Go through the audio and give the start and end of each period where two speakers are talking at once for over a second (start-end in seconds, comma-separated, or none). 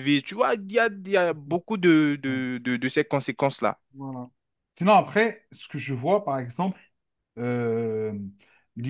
none